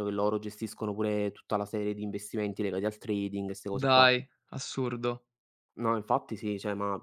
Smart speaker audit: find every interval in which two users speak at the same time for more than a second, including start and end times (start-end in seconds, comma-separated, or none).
none